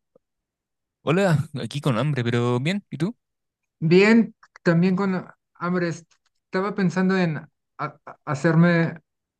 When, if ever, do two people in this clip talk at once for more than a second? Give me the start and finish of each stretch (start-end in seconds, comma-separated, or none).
none